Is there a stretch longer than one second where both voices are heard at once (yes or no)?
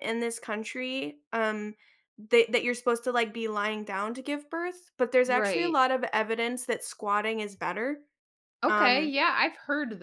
no